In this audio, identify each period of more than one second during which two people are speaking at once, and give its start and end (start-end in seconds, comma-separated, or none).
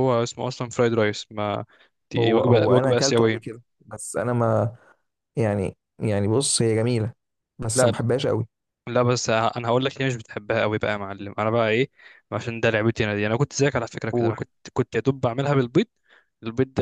2.2-3.6